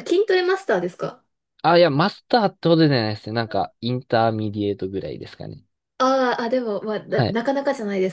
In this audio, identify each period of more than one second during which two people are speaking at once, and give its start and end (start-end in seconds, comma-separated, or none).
none